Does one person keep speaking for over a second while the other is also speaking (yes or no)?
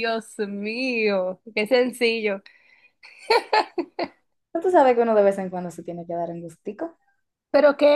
no